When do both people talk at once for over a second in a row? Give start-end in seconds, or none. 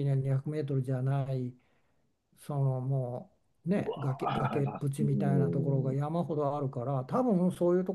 4.2-5.9